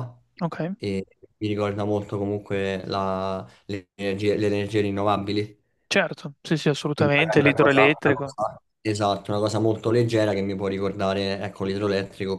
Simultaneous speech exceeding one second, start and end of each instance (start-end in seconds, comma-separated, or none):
6.9-8.3